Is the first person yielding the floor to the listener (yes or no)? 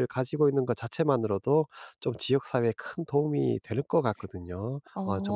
yes